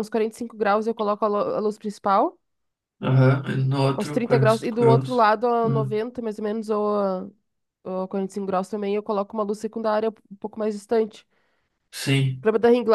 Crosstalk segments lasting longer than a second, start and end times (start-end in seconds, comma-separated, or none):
4.0-6.0